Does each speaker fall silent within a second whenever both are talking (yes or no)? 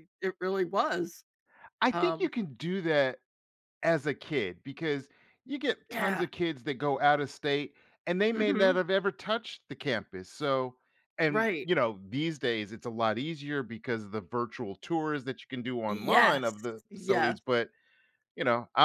no